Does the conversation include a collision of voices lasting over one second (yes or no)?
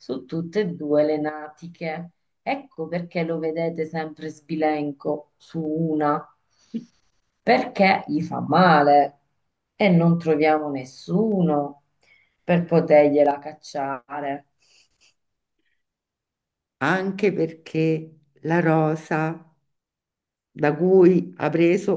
no